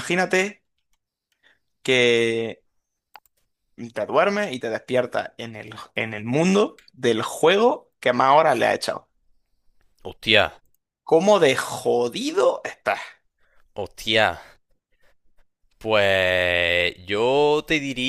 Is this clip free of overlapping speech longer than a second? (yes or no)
yes